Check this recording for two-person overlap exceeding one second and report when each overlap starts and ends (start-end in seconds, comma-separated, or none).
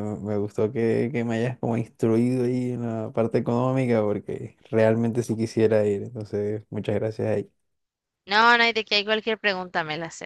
none